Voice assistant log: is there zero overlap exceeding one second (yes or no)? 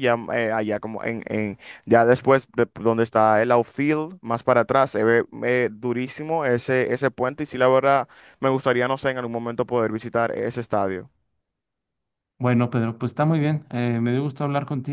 yes